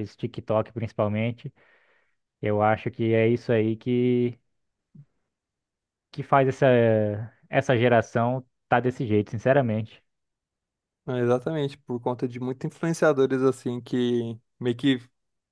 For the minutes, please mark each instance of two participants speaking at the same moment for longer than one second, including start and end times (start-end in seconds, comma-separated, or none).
none